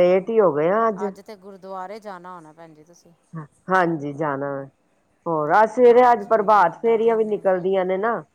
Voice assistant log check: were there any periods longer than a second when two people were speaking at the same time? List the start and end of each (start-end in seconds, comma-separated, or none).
5.9-7.4